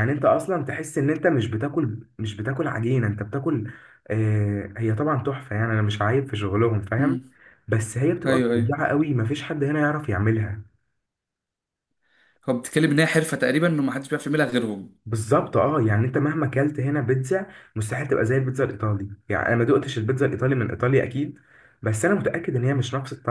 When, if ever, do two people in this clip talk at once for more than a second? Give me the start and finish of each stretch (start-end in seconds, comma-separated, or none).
none